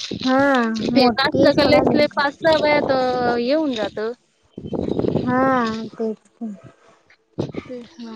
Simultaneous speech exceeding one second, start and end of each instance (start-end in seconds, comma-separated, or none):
0.8-2.1